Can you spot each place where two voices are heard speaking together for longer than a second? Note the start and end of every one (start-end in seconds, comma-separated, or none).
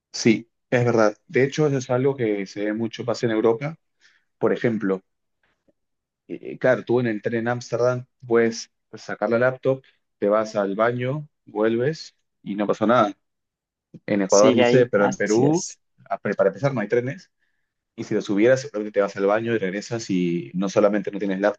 14.3-15.6